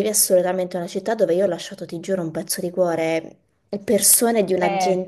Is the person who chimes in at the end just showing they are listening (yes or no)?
yes